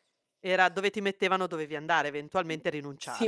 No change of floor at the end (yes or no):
no